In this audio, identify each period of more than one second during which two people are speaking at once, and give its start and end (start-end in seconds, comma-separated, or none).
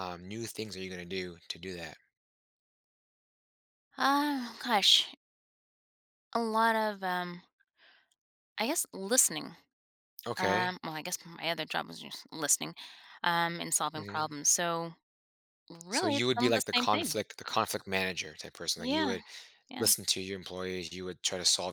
15.9-17.2